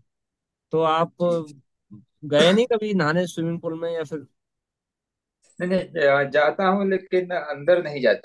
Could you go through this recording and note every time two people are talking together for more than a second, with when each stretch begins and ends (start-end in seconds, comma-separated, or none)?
none